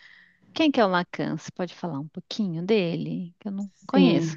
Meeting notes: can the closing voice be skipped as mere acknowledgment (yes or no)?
no